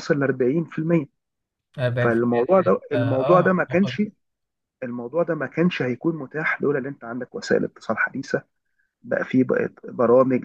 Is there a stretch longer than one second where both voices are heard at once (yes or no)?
yes